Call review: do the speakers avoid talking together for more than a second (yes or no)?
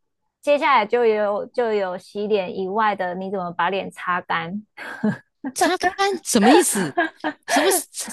yes